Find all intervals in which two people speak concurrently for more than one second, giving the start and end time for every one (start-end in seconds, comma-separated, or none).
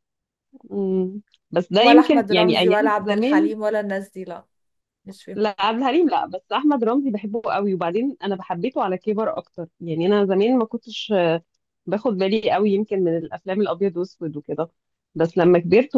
1.8-3.5